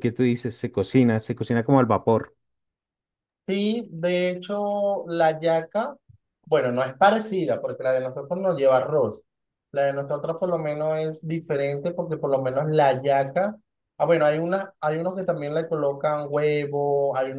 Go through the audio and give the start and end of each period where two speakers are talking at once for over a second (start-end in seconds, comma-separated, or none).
none